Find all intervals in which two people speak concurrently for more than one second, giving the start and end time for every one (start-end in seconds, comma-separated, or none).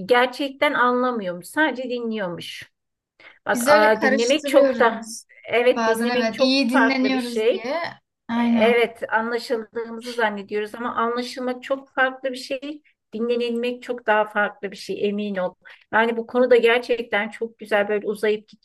3.5-5.0, 5.7-7.7